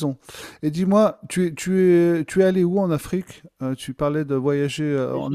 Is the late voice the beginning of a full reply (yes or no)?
yes